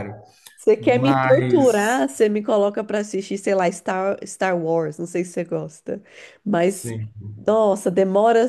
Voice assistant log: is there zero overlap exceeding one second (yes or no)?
no